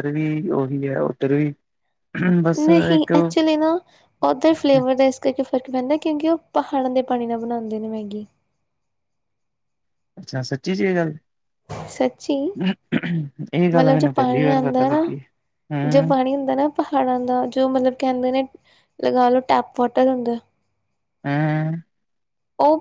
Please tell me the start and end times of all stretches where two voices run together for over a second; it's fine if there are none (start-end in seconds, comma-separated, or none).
13.8-15.1